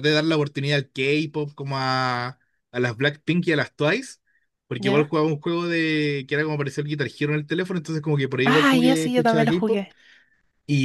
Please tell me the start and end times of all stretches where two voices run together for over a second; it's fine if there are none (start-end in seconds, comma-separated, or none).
8.4-9.8